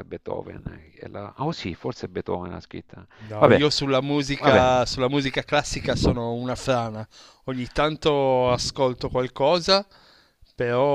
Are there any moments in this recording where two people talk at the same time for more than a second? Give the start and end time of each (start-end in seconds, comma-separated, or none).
none